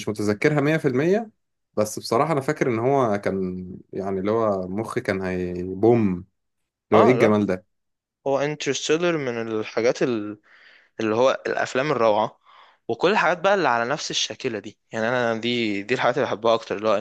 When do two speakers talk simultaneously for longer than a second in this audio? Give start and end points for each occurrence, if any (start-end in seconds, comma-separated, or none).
none